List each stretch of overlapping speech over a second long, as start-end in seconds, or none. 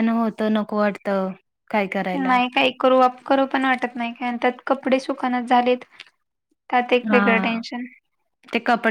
none